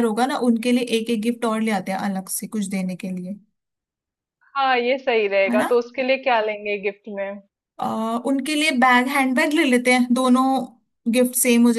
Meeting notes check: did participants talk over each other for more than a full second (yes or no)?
no